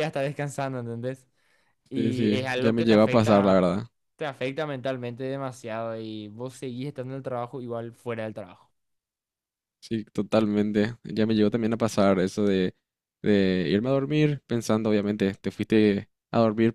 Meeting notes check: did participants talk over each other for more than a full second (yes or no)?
yes